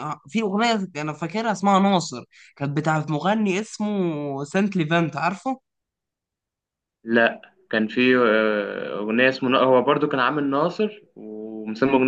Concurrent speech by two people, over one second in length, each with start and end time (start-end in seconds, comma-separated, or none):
none